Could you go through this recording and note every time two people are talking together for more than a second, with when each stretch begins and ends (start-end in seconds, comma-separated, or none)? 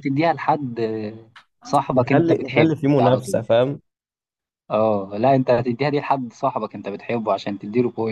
2.0-3.4